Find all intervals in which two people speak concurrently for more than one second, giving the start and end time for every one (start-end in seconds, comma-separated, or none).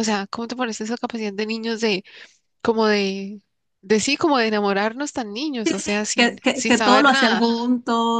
5.6-7.4